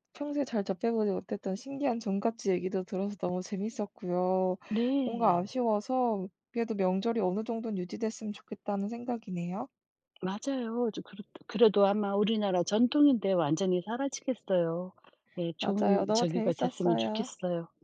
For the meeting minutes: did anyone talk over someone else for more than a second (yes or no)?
yes